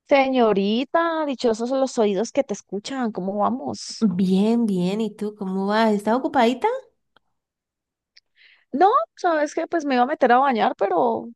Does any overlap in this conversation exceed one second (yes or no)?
no